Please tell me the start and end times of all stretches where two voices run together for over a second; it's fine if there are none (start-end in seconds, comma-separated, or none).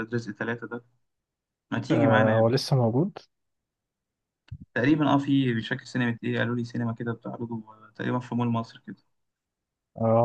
none